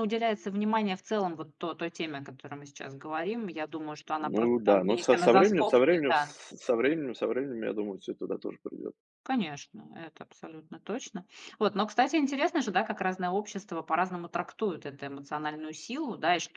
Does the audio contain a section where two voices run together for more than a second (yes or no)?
yes